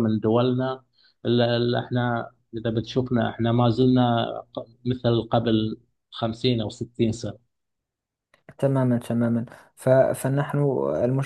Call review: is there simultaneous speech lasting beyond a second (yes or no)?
no